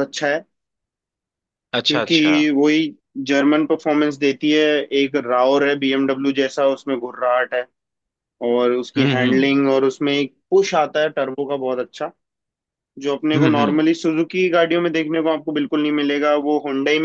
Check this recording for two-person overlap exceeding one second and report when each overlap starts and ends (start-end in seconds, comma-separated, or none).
none